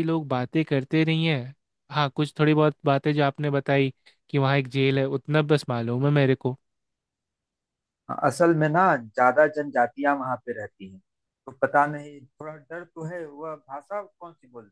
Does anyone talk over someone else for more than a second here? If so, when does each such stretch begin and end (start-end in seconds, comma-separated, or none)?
none